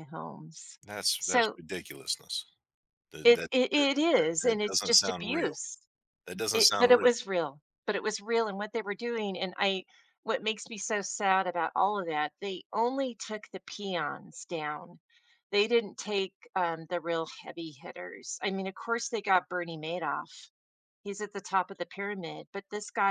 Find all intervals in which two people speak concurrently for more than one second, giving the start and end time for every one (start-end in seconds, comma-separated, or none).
3.2-5.5